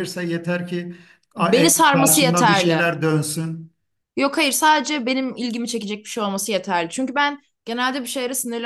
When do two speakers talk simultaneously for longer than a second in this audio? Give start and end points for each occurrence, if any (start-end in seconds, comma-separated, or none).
1.4-2.9